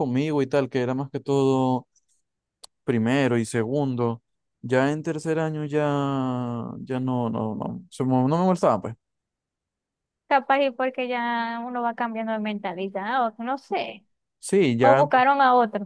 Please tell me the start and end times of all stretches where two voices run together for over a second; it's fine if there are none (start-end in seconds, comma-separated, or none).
none